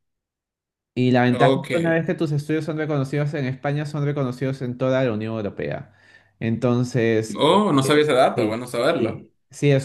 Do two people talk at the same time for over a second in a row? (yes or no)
yes